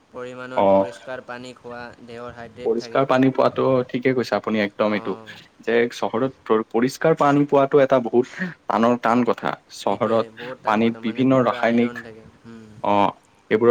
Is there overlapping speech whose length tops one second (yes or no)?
yes